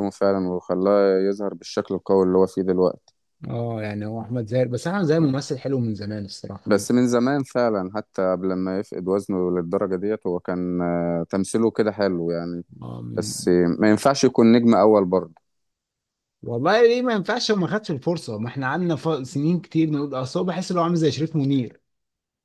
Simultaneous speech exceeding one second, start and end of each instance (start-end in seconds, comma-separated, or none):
none